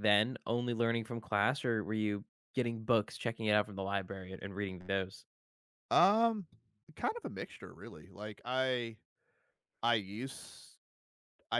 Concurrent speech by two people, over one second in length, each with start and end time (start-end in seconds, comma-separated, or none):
none